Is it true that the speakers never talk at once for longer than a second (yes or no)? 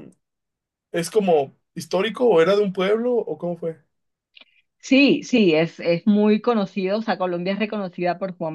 yes